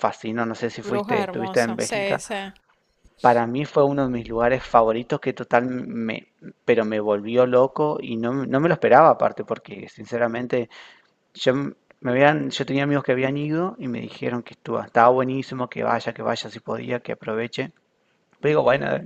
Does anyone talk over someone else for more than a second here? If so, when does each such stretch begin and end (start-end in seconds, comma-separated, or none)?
0.8-2.2